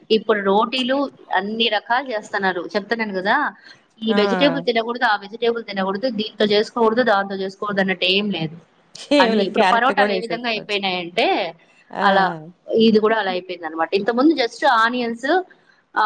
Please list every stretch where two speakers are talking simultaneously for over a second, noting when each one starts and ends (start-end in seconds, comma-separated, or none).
9.2-10.8